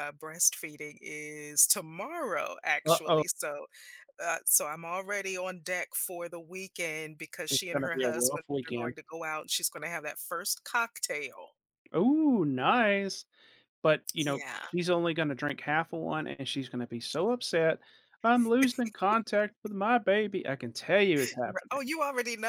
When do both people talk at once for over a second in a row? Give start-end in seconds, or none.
7.5-8.9